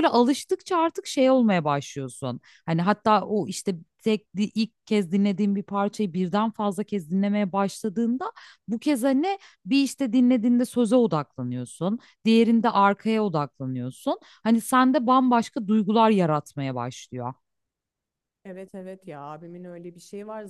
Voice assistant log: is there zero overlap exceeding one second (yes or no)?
yes